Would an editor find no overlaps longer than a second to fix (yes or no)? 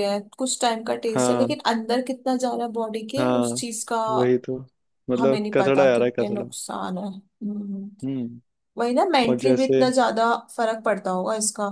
no